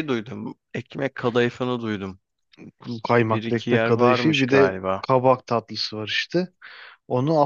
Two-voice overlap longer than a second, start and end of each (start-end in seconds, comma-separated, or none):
3.3-5.1